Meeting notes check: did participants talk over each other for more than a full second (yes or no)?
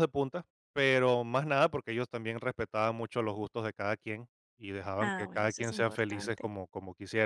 yes